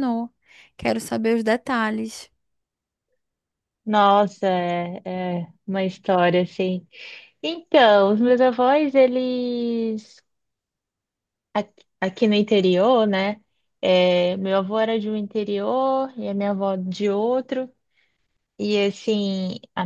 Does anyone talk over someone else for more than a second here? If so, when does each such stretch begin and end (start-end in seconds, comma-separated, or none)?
none